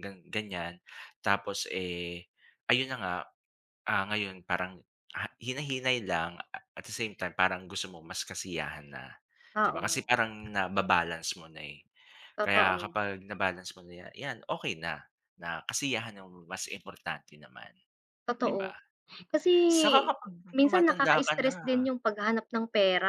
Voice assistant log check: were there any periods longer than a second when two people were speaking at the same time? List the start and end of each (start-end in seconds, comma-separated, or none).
20.6-21.9